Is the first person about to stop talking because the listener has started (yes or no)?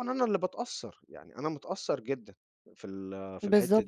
yes